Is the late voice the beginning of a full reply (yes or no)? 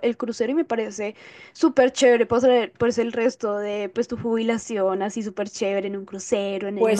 yes